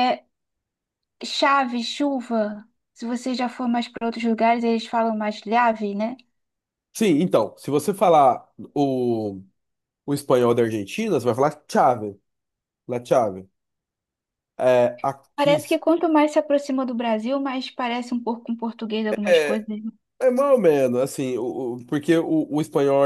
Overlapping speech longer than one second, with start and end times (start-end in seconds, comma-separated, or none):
none